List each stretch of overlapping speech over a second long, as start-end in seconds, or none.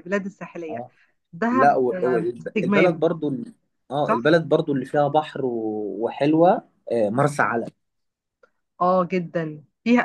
1.5-3.0